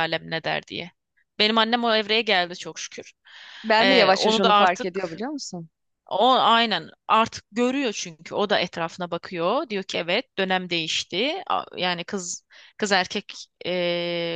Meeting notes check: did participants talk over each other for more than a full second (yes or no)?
yes